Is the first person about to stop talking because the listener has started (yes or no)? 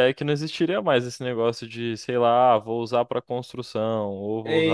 yes